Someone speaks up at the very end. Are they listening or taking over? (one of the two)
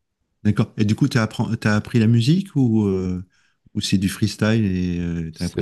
taking over